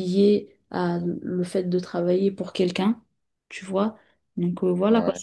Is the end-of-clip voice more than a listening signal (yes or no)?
no